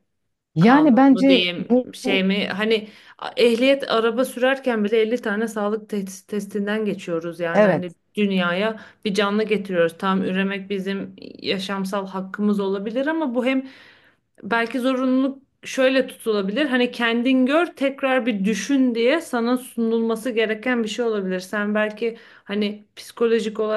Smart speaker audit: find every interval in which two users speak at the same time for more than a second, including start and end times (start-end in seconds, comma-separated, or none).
0.6-2.3